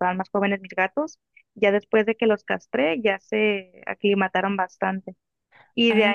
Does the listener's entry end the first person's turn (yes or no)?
no